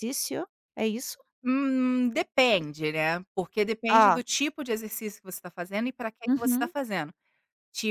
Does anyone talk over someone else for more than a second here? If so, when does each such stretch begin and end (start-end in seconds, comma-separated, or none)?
none